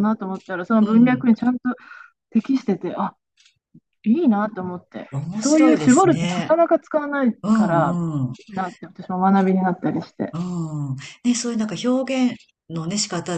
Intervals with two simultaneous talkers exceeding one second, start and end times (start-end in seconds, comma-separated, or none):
5.1-6.6